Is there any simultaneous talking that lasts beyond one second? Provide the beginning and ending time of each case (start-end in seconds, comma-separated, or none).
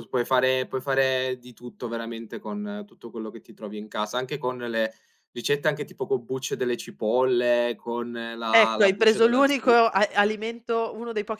8.5-9.7